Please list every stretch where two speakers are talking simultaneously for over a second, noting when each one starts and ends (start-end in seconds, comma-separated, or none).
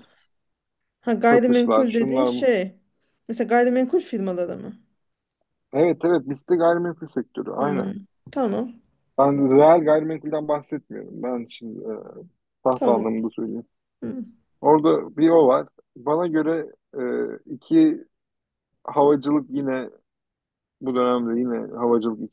1.3-2.5